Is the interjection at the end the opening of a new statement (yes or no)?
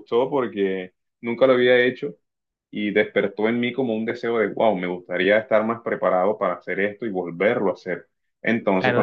yes